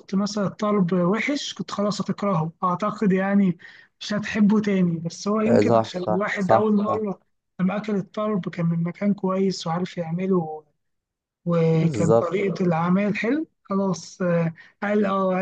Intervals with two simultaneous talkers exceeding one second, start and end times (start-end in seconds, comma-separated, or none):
5.4-7.0